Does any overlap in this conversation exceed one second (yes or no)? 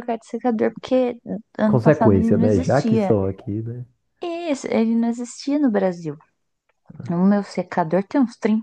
yes